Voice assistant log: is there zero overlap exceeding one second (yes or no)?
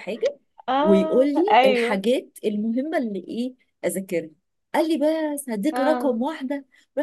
no